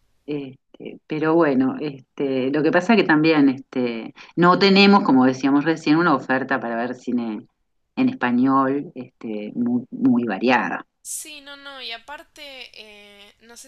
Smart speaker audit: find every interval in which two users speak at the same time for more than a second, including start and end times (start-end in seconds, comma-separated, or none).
none